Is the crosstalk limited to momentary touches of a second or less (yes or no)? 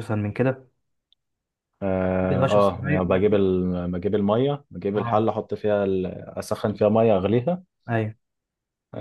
no